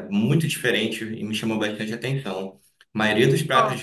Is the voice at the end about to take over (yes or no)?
no